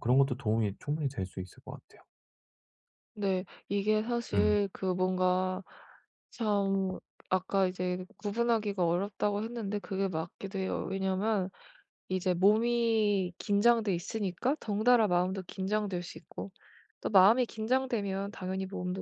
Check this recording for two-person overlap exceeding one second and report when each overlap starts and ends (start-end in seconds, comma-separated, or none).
none